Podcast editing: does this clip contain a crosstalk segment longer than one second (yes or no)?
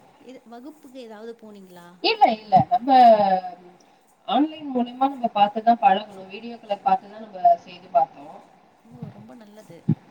no